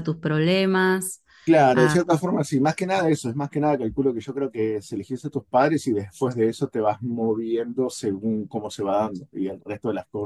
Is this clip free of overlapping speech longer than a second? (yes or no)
yes